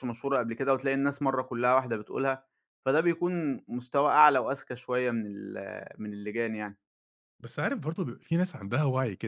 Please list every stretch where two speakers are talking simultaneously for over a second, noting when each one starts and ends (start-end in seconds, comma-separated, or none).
none